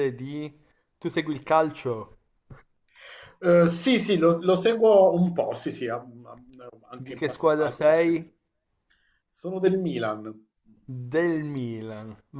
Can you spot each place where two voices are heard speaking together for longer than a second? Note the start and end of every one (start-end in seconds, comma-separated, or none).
7.0-8.3